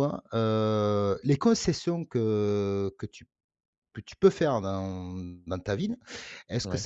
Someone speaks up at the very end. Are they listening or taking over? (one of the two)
listening